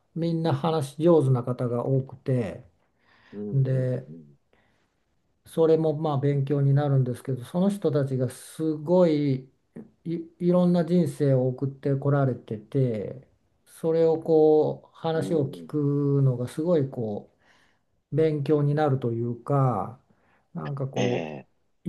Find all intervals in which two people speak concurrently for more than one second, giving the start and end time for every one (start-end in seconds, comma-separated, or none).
none